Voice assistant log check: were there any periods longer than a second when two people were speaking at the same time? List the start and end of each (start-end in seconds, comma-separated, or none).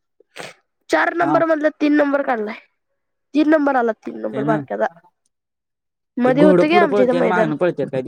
6.2-7.5